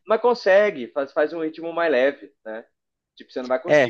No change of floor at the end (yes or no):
yes